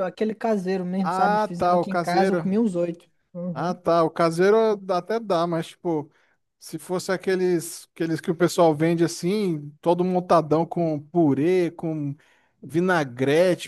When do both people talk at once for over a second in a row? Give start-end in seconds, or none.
1.0-2.6